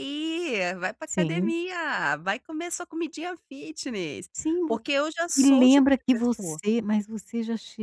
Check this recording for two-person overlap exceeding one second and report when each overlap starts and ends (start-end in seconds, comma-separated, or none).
5.4-6.6